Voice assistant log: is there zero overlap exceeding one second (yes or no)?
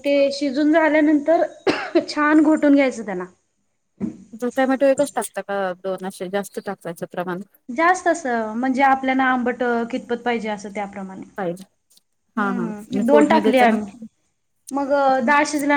no